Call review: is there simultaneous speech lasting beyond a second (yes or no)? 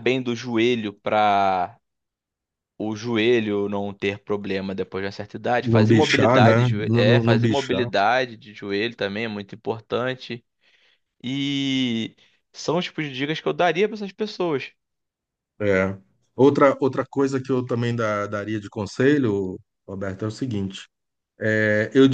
yes